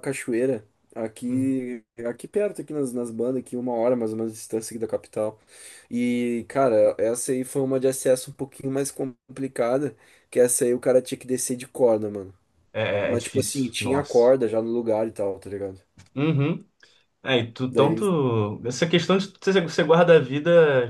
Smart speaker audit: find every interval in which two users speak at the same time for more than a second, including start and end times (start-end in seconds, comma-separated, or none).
13.0-14.3